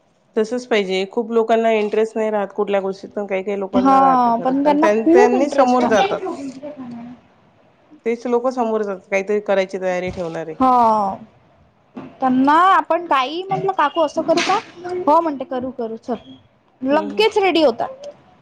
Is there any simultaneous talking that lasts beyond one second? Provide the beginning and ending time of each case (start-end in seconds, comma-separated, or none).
3.8-6.1